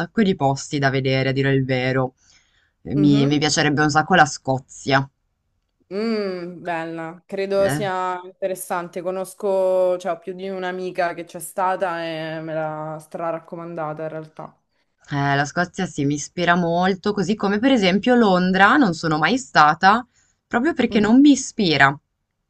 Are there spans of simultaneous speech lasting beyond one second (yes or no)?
no